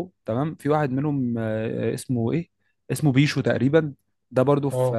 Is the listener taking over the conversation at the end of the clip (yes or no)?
no